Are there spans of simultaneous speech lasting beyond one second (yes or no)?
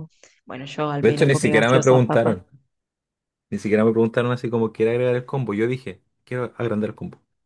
yes